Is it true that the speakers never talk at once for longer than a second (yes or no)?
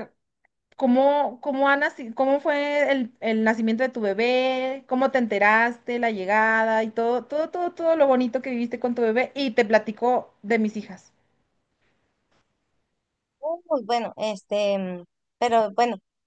yes